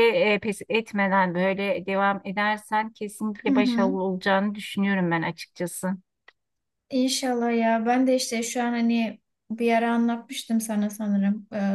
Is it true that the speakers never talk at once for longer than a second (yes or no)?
yes